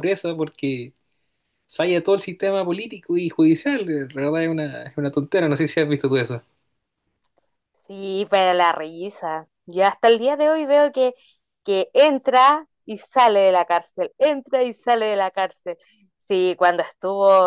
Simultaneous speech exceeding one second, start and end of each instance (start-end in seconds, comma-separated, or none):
none